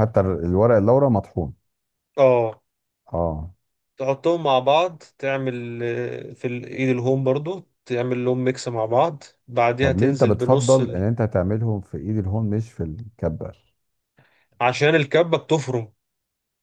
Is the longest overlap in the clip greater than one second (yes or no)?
yes